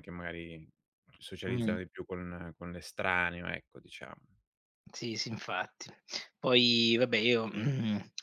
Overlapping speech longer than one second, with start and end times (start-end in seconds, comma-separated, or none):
none